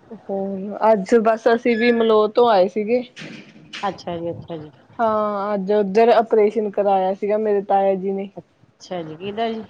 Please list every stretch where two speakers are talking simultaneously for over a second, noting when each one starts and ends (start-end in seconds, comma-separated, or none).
none